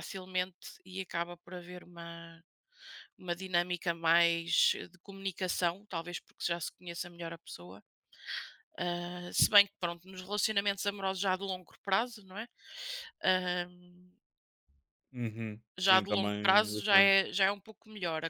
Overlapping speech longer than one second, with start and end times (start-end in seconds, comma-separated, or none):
15.8-17.2